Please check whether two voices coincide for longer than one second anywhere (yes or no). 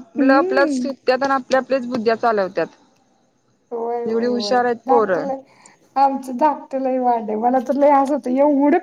no